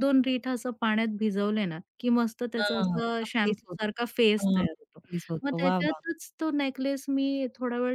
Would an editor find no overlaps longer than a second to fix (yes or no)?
no